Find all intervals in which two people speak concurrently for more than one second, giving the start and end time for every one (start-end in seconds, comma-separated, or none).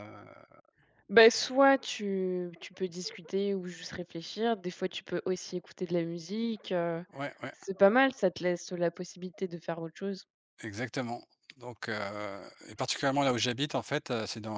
none